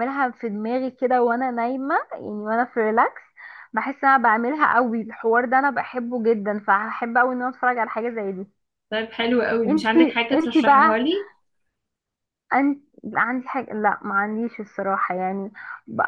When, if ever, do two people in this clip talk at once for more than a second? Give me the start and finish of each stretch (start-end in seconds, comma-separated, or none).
9.7-11.0